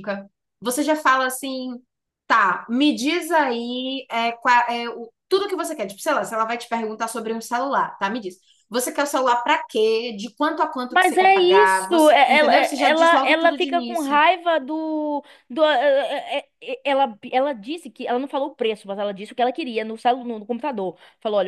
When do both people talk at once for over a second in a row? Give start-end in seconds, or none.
10.9-14.2